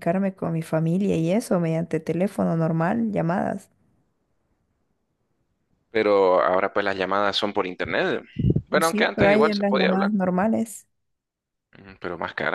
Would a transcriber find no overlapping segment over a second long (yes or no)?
no